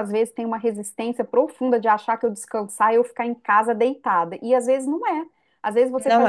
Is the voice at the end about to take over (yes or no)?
no